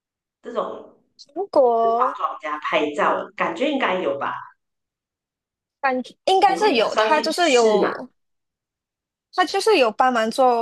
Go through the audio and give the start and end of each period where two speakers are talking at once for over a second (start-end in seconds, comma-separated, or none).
6.4-7.9